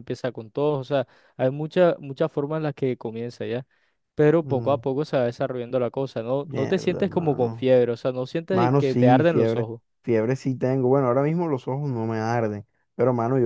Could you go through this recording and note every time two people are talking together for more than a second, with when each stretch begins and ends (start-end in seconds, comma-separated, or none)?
6.4-7.7, 8.5-9.8